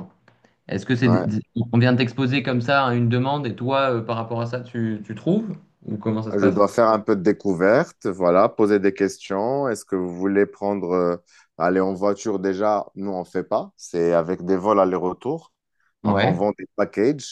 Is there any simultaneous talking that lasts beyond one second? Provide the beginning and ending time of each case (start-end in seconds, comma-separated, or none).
none